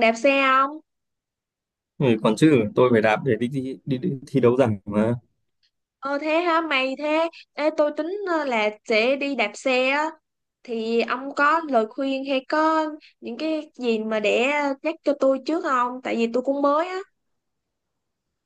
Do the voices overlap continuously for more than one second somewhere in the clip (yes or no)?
no